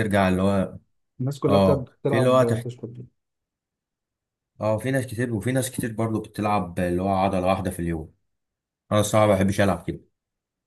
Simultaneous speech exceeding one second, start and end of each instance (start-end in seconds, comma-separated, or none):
1.5-2.7